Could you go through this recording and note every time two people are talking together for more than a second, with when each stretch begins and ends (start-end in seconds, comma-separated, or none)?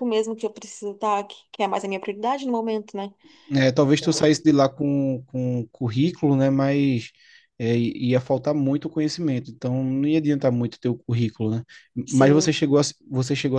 none